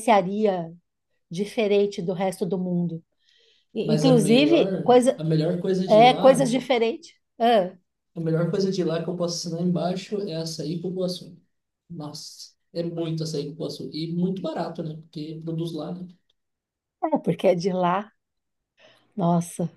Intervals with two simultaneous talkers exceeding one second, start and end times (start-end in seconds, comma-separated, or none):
3.8-5.2